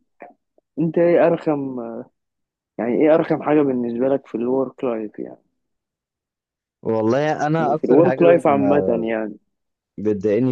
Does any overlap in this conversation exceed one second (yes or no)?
yes